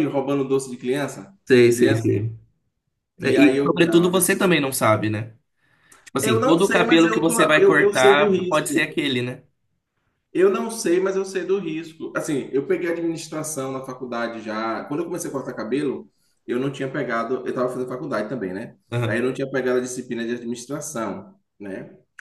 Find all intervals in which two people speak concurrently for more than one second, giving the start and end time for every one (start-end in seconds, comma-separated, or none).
3.2-4.6, 6.2-8.9